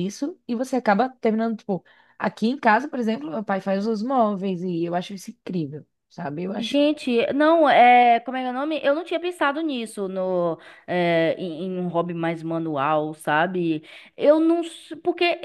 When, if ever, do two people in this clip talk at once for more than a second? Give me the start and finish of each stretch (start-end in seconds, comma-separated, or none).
none